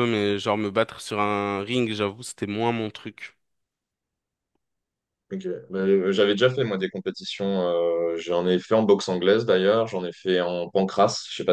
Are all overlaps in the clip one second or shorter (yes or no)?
yes